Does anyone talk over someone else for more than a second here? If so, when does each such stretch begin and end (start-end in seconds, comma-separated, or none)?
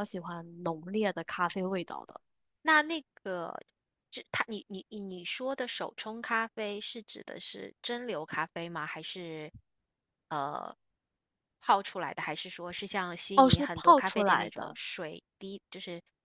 13.3-14.8